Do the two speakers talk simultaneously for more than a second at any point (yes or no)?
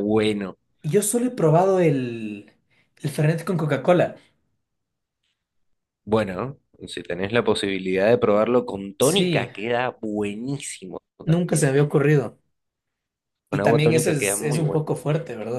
yes